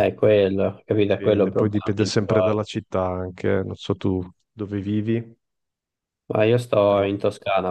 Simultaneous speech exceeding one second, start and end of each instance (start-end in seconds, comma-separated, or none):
1.0-2.7